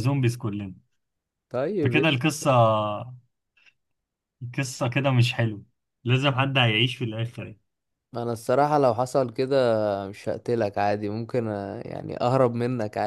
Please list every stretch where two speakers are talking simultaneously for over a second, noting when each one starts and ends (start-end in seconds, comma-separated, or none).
none